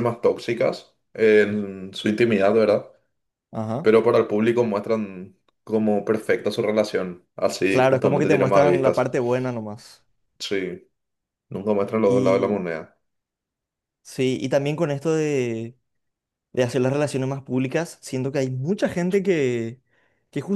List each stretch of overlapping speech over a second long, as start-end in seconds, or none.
7.7-9.1